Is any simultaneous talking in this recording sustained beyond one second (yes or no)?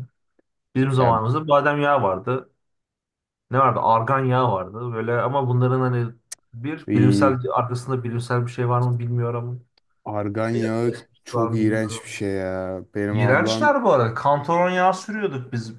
yes